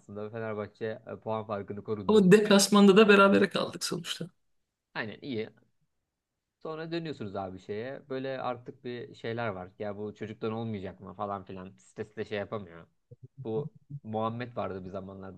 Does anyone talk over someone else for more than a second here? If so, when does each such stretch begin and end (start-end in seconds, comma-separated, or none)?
none